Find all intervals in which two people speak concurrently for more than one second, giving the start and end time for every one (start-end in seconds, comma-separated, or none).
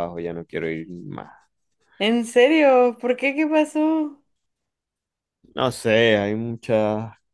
none